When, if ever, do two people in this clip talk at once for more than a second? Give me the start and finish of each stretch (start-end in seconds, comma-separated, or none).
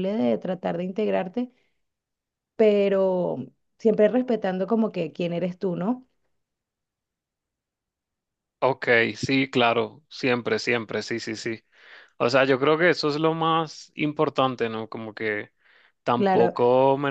none